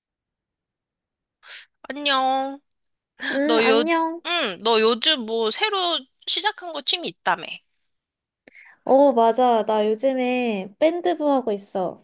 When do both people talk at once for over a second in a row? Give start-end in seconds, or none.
none